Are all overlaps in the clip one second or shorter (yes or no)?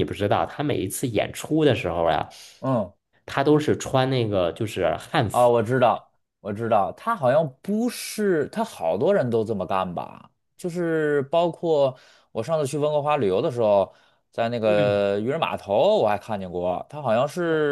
yes